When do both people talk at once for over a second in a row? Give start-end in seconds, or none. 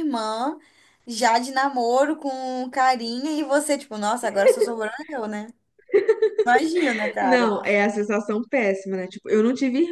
none